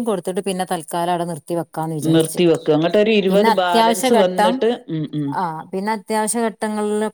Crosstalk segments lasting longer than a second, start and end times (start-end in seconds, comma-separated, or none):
3.3-4.5